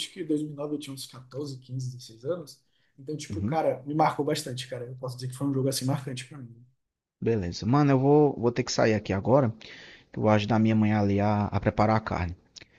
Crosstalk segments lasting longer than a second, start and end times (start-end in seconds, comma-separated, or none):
none